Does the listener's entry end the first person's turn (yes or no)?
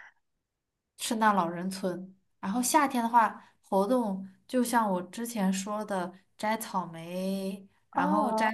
no